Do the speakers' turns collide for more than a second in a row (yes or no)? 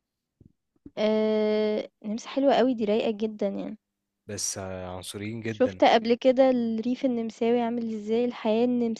no